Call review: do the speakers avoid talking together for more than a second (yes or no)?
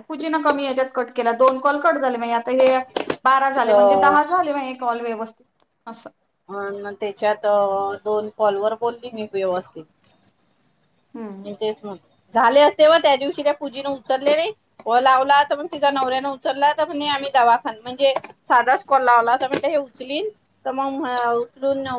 yes